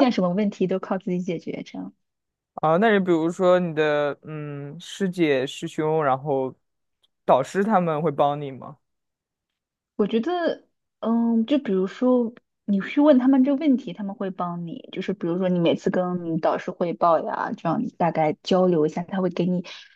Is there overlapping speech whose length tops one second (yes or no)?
no